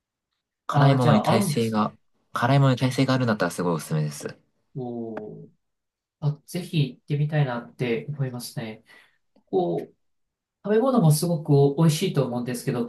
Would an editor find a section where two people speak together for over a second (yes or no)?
yes